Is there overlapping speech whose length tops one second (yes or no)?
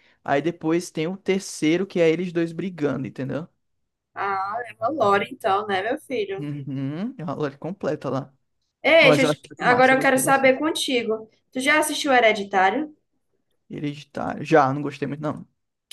yes